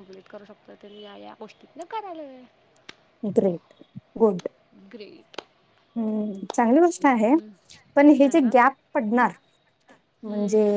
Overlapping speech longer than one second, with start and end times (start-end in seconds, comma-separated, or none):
none